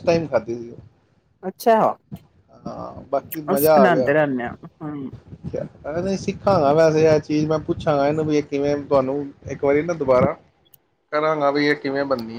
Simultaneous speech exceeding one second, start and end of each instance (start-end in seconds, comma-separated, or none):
none